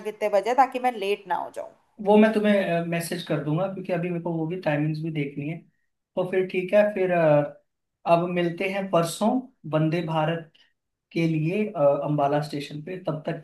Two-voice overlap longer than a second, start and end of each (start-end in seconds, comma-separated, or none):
none